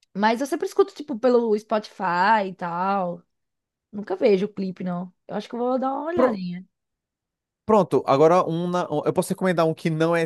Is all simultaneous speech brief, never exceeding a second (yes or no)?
yes